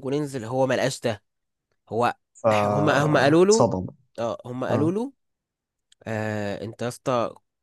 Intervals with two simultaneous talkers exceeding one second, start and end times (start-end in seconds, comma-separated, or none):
2.6-3.8